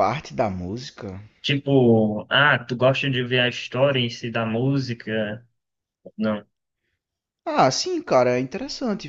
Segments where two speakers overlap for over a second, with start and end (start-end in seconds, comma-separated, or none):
none